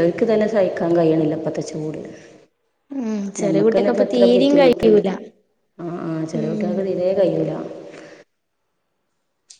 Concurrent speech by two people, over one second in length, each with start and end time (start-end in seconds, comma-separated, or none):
3.4-5.0